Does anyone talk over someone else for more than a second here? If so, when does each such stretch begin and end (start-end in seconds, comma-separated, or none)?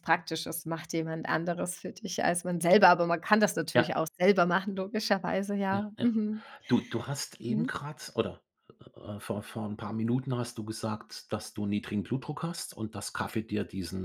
none